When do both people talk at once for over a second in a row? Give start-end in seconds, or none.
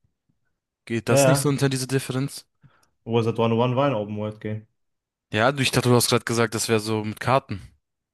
none